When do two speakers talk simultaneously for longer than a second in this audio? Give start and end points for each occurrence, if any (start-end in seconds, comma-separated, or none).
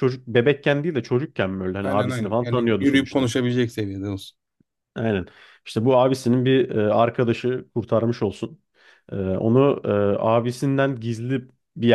1.8-3.3